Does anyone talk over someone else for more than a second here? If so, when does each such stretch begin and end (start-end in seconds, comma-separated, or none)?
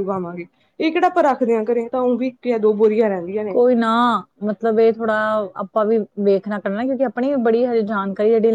none